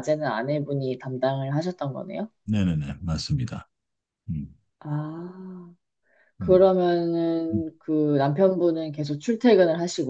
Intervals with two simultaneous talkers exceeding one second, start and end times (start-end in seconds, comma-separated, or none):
none